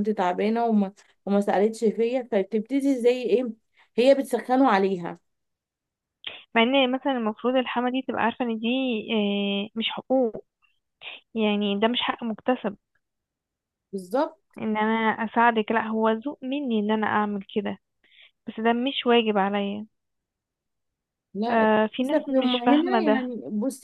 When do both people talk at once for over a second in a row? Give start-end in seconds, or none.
21.5-23.2